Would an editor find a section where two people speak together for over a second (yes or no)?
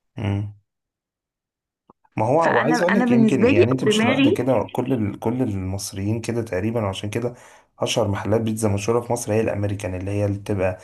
yes